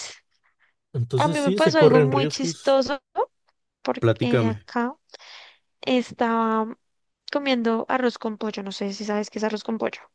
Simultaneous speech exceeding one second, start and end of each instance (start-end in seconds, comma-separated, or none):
1.2-2.8